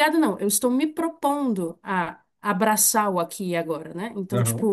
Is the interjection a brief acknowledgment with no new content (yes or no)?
yes